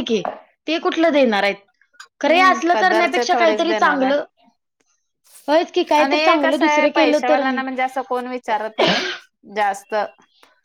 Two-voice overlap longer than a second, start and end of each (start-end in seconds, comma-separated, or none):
6.0-7.6